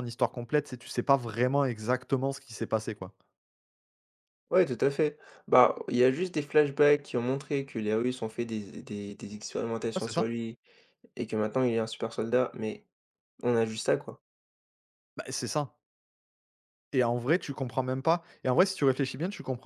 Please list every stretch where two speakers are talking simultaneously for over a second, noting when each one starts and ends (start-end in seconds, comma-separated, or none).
none